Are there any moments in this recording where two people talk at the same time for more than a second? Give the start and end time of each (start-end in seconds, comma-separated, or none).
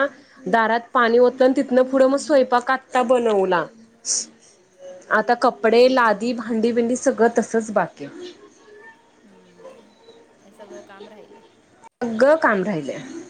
none